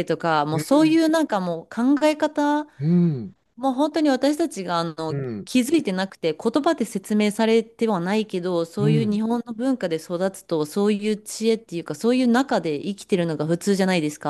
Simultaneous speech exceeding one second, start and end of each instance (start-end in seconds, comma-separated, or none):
none